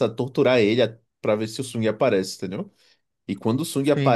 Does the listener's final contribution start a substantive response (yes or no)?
no